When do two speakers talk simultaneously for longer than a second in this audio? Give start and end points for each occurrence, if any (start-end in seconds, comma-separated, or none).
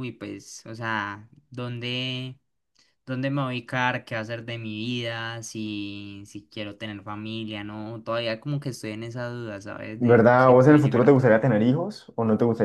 10.0-11.4